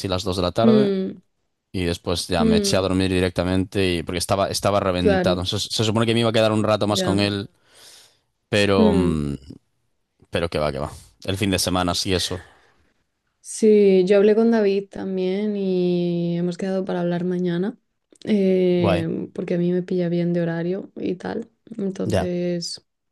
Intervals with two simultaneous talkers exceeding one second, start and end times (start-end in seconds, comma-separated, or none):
none